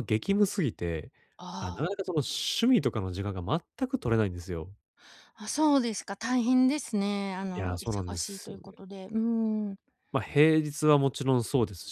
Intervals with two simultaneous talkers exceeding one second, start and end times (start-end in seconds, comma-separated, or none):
7.5-8.8